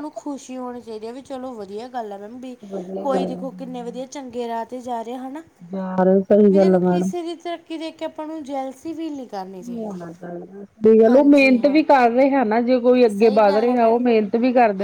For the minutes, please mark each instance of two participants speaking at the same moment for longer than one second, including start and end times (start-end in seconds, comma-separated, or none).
none